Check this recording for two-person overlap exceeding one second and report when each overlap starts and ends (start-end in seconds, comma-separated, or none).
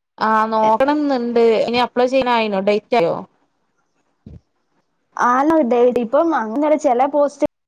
none